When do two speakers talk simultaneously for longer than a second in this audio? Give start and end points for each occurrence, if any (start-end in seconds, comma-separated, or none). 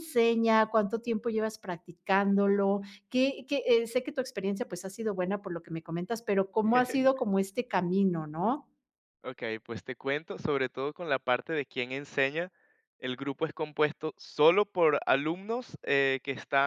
none